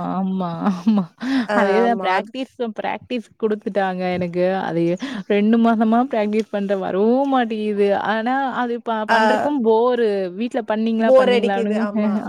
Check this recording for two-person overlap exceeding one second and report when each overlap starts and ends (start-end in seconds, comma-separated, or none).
none